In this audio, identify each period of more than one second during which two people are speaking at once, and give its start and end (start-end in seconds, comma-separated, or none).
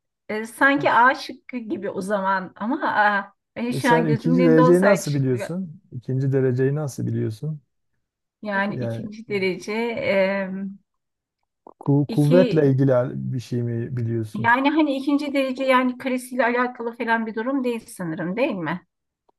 3.8-5.6